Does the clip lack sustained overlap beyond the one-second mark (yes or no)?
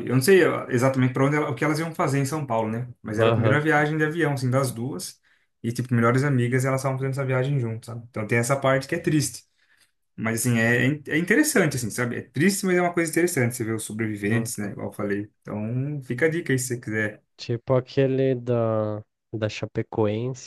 yes